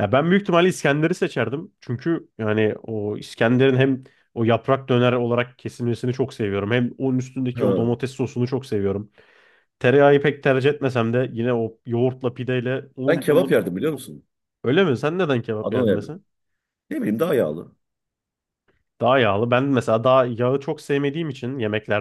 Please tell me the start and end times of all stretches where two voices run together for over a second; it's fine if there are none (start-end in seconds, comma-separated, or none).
none